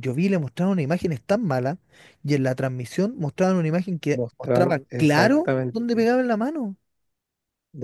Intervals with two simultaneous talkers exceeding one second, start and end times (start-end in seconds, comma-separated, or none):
4.1-6.1